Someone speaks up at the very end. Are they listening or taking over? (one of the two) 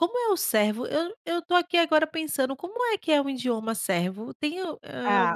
taking over